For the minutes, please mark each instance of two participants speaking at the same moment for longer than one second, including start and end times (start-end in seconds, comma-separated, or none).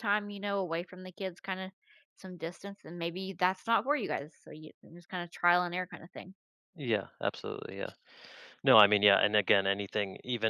none